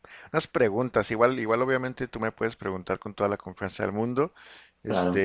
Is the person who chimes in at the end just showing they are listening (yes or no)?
yes